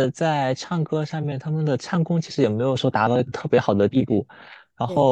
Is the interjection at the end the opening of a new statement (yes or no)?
no